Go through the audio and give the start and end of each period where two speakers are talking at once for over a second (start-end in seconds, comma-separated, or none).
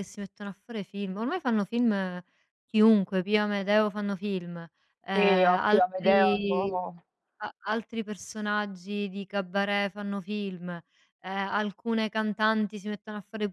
5.1-6.7